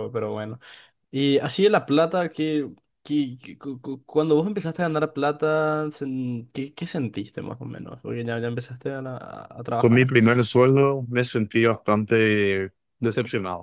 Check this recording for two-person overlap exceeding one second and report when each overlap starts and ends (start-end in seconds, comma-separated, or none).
none